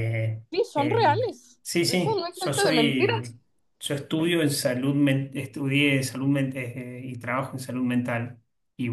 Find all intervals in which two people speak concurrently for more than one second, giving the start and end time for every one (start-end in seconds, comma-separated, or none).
0.5-3.3